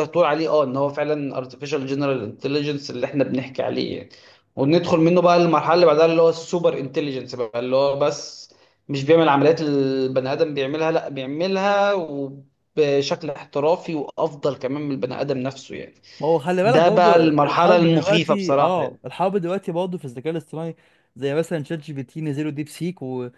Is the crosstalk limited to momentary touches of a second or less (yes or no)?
no